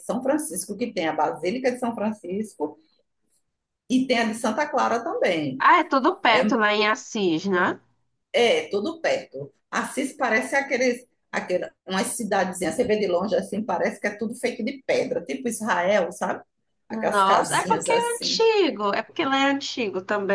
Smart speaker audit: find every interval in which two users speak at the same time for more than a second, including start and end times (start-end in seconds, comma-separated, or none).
16.9-18.4